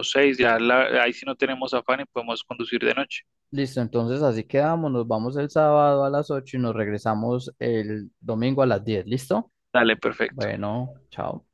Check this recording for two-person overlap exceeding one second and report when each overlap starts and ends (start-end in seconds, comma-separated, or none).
none